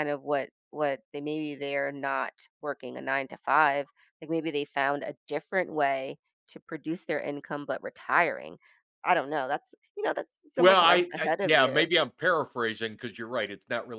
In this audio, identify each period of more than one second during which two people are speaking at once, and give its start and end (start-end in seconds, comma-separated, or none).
10.6-11.8